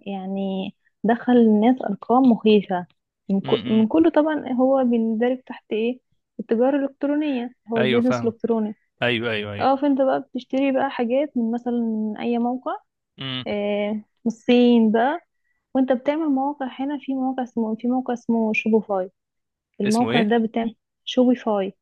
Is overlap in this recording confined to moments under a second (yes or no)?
yes